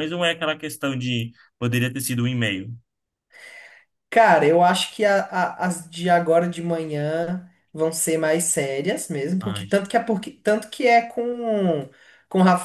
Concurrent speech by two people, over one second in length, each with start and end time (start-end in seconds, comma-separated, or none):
none